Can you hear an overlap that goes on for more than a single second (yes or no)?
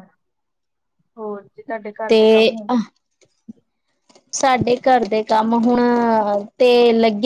no